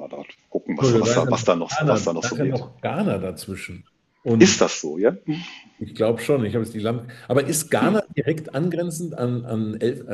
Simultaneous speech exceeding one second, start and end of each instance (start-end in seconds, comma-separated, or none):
0.8-2.6